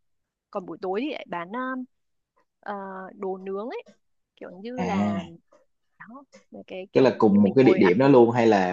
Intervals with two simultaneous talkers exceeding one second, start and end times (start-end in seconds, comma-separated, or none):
6.9-8.2